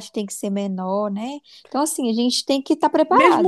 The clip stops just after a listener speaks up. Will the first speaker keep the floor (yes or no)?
no